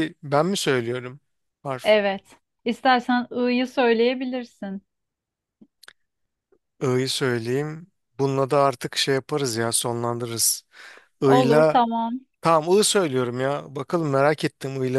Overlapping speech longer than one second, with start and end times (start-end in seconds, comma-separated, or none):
none